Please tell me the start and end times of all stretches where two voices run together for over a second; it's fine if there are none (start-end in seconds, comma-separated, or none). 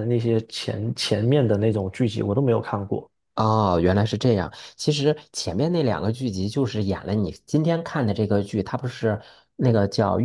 none